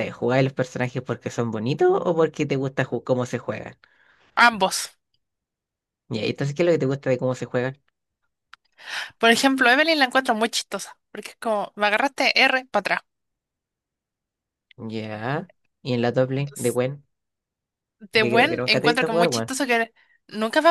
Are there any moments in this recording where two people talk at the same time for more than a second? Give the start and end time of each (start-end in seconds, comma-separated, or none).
18.2-19.5